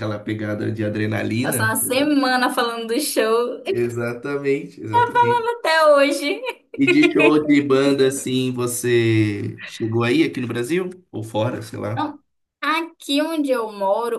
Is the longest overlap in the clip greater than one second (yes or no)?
no